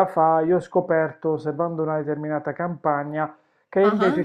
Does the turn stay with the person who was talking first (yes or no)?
yes